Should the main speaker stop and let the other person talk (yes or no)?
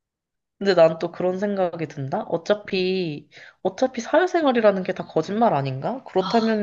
no